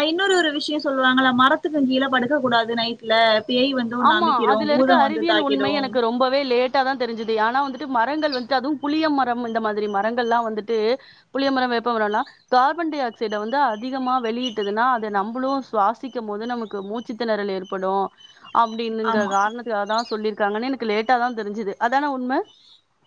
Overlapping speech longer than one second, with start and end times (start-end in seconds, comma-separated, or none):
4.1-5.9